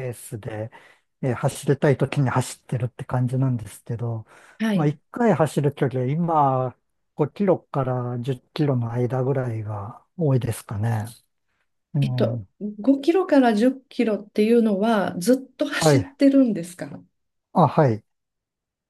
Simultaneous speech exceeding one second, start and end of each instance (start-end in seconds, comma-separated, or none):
none